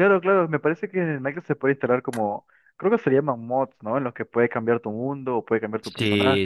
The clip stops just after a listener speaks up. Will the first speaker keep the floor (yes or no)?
no